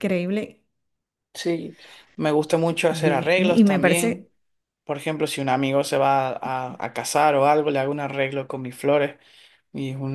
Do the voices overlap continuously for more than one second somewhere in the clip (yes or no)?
yes